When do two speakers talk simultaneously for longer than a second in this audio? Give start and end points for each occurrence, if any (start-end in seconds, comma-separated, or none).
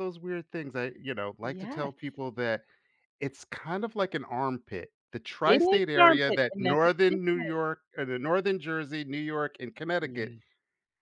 5.5-7.6